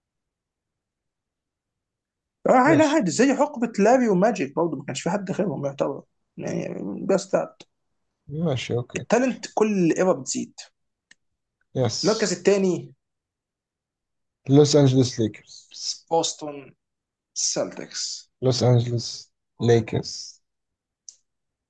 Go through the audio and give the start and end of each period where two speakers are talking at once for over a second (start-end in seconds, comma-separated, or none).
none